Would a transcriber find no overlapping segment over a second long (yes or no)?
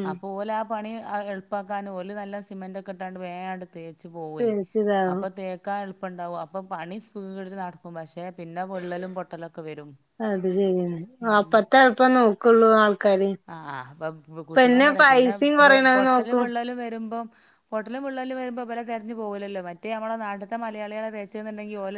yes